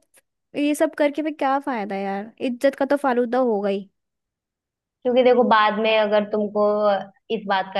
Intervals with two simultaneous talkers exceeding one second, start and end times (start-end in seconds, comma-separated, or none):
none